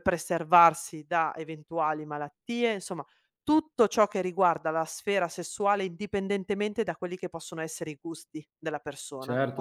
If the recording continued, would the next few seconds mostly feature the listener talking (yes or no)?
yes